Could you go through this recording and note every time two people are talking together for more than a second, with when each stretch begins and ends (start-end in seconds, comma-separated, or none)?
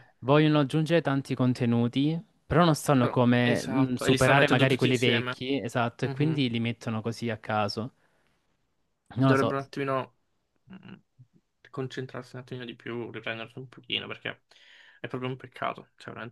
3.0-5.4